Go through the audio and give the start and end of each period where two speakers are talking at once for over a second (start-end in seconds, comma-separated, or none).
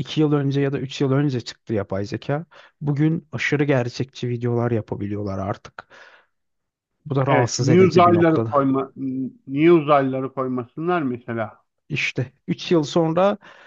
7.3-8.5